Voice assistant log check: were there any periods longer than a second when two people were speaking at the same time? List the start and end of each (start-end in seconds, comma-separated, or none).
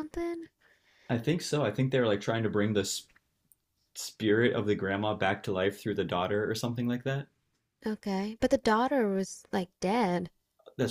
none